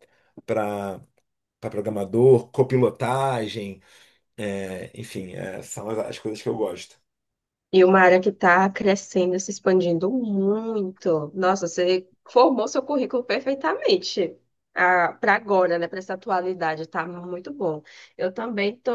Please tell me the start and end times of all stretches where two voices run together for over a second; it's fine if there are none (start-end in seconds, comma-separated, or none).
none